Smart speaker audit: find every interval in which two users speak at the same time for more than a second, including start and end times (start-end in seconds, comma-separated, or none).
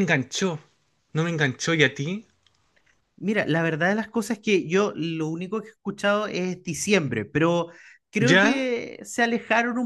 none